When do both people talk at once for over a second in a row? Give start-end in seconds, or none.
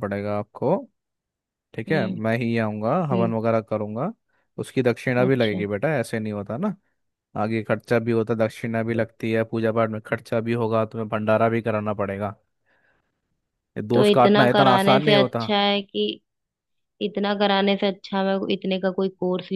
13.9-15.4